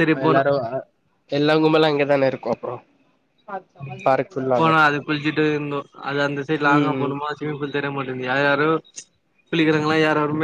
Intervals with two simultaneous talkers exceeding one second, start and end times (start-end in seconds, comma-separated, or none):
none